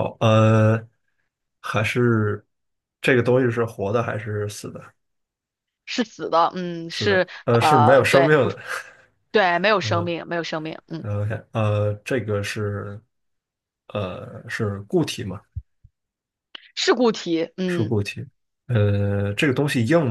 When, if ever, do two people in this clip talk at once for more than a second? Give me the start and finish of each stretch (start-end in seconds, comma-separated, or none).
6.9-8.6